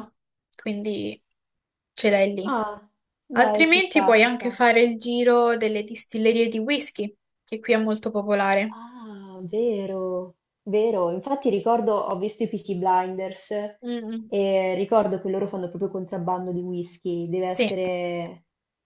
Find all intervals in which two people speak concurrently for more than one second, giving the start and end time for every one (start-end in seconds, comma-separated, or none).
3.3-4.6